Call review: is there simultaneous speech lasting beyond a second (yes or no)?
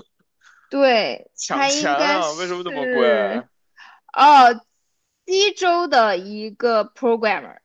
yes